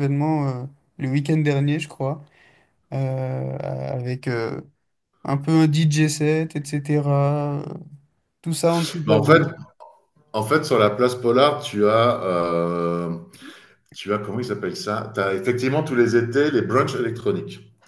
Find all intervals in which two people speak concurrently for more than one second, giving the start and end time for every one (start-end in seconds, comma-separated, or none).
none